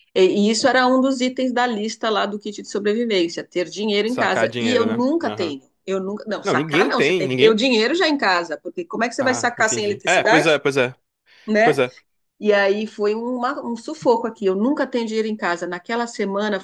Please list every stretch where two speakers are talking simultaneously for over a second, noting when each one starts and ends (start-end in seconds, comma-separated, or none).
4.1-5.6, 6.4-7.6, 9.2-10.6